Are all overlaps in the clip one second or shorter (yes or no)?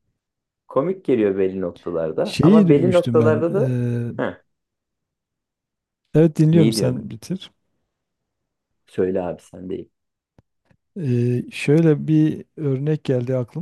no